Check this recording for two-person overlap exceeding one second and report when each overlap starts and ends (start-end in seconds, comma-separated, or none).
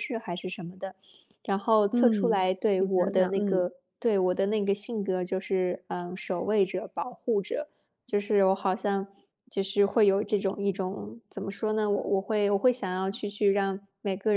1.9-3.7